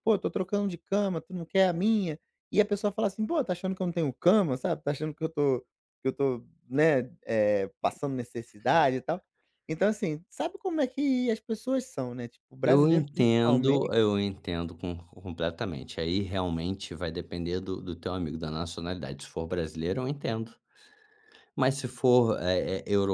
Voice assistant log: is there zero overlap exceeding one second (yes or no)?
no